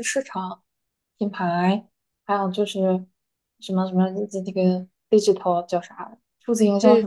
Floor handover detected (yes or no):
yes